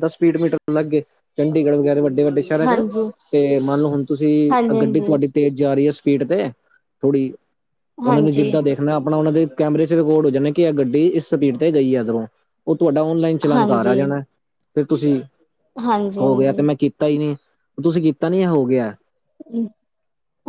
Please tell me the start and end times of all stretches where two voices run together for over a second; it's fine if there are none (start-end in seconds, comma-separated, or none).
none